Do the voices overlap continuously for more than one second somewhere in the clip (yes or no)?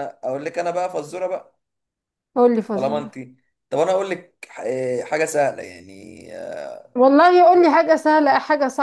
no